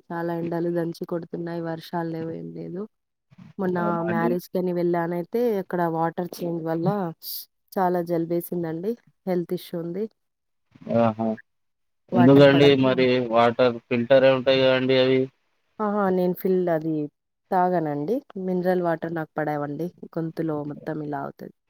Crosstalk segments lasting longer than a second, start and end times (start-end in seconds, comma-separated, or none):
none